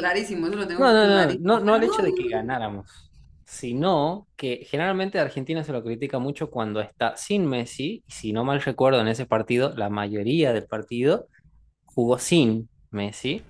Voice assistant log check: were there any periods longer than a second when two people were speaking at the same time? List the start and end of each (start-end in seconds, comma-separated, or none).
0.8-2.6